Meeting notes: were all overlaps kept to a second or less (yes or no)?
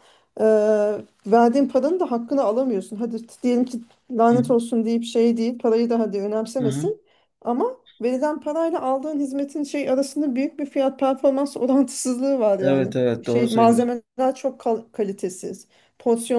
no